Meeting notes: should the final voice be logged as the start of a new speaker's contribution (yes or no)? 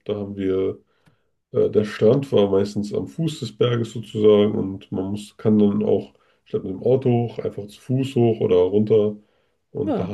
no